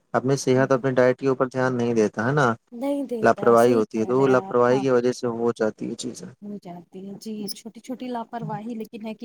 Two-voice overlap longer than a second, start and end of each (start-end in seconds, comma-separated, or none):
3.2-4.8